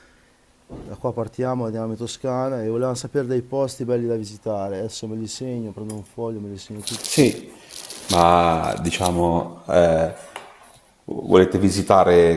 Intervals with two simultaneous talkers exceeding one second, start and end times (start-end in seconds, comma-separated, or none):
none